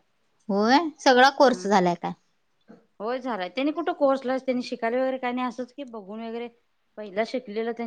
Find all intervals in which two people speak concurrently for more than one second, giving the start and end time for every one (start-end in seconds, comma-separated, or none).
none